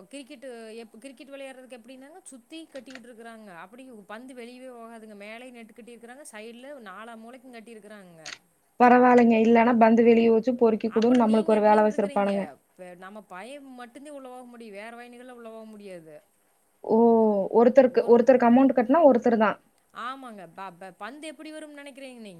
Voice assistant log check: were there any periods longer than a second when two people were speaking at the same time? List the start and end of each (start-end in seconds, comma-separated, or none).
11.0-12.3